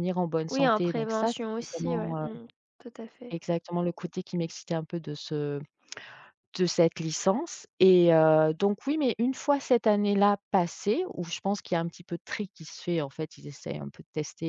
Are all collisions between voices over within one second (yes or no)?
no